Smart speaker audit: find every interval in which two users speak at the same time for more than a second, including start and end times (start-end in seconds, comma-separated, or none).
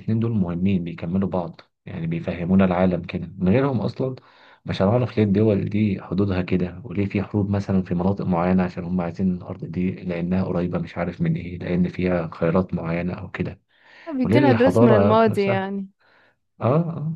14.2-15.7